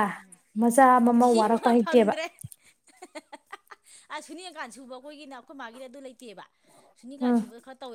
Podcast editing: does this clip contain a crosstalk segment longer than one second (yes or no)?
yes